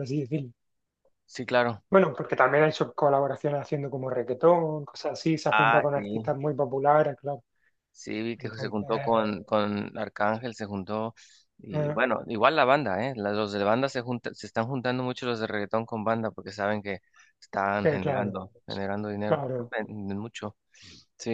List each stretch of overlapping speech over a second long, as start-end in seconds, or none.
none